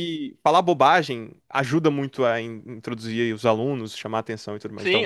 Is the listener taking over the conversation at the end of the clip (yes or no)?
yes